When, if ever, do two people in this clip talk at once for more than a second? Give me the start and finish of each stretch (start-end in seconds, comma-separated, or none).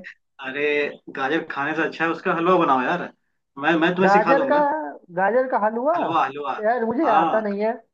none